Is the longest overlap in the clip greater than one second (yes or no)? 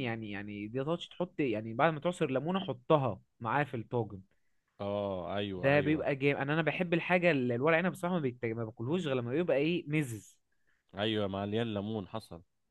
no